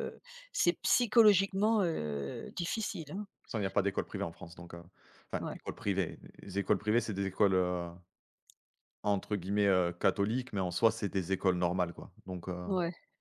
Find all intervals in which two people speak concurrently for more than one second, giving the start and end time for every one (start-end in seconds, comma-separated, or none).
none